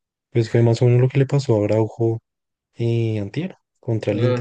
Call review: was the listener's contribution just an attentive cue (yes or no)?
no